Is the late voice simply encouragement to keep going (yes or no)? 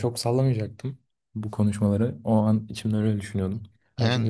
yes